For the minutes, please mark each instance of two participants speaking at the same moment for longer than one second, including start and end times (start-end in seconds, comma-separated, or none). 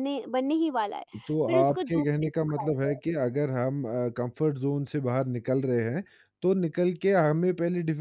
1.4-3.0